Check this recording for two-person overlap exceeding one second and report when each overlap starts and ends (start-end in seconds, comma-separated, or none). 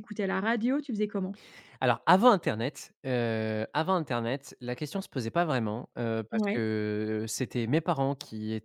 none